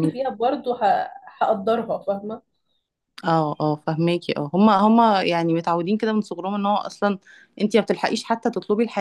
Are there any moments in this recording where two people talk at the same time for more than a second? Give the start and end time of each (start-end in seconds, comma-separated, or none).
none